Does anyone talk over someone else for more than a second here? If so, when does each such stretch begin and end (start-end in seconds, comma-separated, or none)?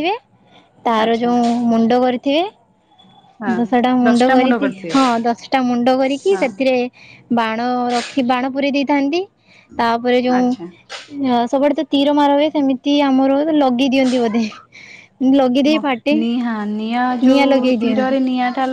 none